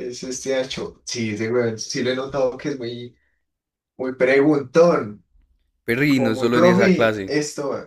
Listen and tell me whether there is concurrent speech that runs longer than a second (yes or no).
yes